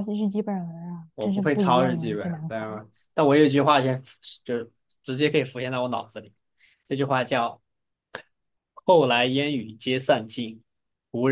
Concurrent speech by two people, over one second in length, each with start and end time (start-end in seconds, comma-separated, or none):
1.1-2.8